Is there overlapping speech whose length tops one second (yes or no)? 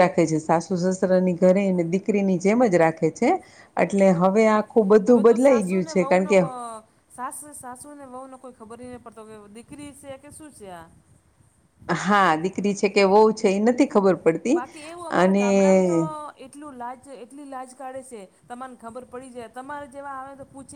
yes